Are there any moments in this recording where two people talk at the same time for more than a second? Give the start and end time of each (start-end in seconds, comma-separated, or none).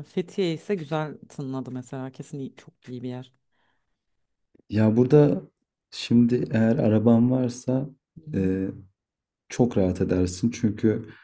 none